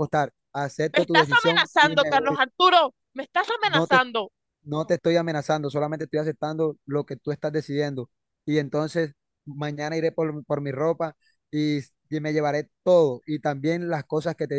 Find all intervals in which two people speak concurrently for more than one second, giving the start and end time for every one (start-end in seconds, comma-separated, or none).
0.9-2.4